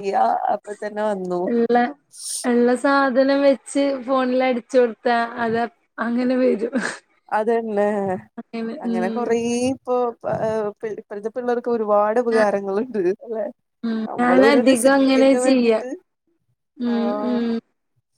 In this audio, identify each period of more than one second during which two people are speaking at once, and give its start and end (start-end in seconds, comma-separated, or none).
14.1-15.8